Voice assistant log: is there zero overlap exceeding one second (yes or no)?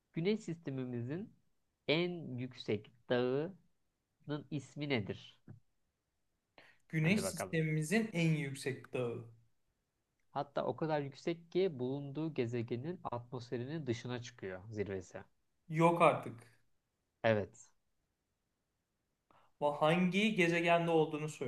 yes